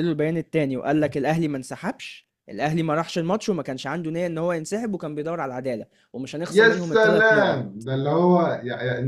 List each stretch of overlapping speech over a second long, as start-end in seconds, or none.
6.5-7.8